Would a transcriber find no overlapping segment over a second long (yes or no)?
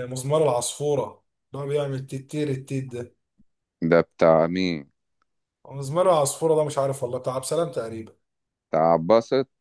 yes